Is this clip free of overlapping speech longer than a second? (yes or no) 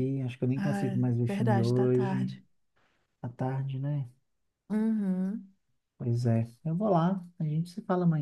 no